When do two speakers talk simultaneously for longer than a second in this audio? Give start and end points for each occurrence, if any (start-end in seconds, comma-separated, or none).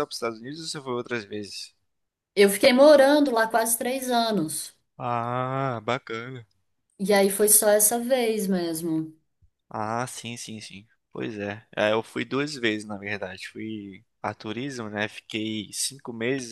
none